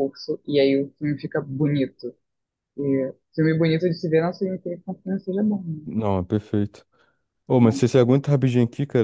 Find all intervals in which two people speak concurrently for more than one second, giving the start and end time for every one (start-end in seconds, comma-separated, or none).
none